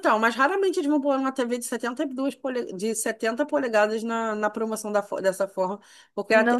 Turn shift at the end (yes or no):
yes